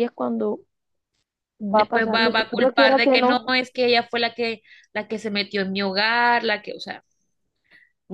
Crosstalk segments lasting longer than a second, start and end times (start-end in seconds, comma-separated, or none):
1.7-3.5